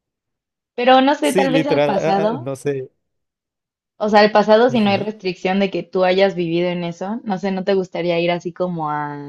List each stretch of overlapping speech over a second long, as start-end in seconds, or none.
1.2-2.5